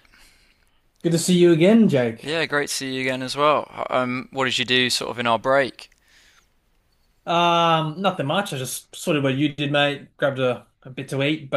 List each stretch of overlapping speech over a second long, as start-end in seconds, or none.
none